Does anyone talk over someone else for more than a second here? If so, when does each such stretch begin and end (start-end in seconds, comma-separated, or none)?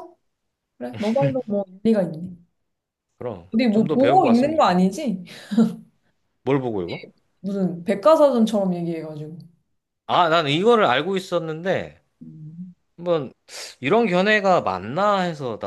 3.5-4.8